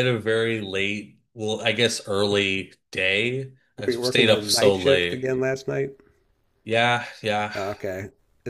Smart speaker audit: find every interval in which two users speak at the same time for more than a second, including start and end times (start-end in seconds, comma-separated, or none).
3.8-5.3